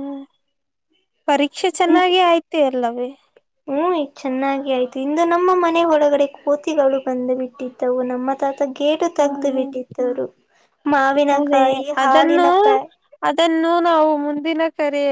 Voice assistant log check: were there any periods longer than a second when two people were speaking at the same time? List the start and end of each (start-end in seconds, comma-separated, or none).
none